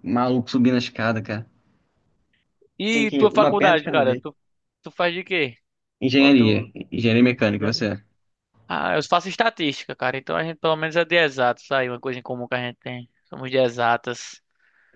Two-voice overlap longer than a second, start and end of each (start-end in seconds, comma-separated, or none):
2.9-4.2